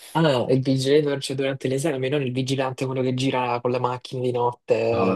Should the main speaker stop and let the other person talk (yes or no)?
no